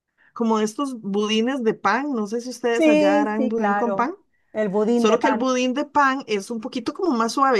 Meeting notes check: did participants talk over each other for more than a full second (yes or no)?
yes